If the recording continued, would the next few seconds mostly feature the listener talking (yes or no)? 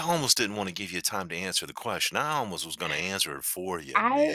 yes